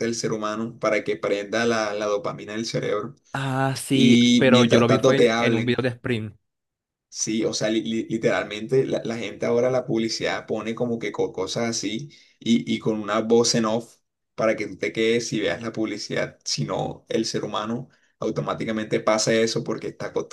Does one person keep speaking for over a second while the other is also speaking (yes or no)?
yes